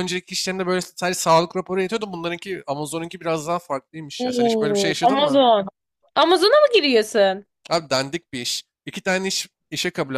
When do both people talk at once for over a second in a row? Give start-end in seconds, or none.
4.2-5.4